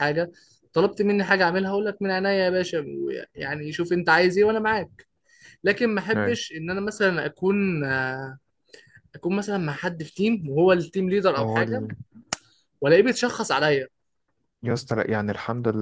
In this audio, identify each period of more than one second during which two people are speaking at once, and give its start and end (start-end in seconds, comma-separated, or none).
none